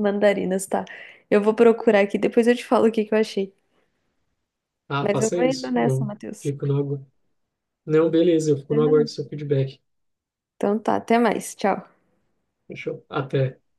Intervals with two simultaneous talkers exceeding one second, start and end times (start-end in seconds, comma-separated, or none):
5.0-6.5